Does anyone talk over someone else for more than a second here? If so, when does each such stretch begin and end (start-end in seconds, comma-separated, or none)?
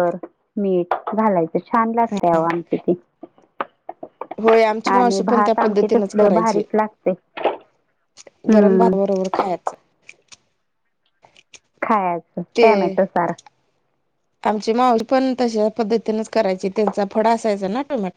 5.0-6.6